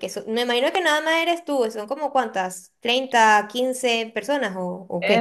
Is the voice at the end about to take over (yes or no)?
yes